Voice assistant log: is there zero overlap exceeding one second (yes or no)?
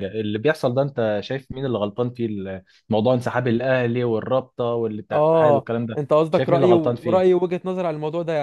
no